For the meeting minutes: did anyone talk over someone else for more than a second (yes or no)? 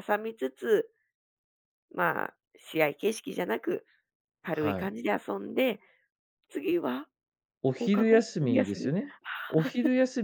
yes